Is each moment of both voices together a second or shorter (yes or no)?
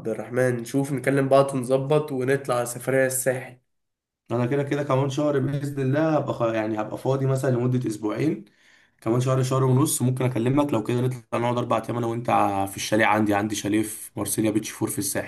yes